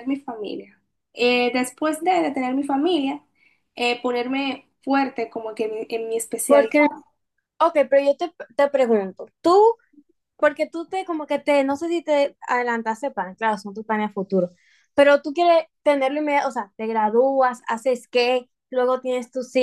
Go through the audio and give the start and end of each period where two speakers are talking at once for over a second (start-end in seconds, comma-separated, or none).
none